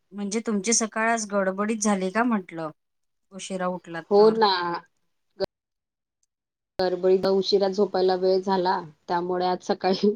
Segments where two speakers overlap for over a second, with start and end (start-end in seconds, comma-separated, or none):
none